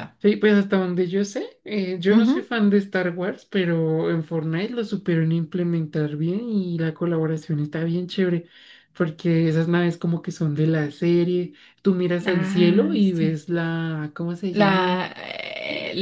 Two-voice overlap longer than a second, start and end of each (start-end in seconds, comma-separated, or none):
12.2-13.4